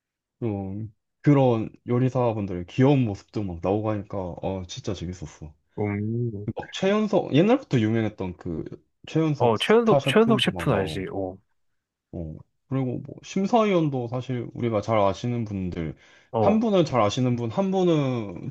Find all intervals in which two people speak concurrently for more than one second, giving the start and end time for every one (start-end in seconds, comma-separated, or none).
9.4-11.1